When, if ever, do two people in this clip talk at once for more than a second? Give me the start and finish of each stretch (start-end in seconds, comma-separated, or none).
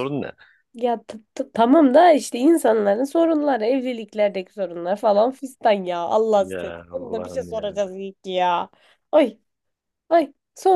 6.4-7.8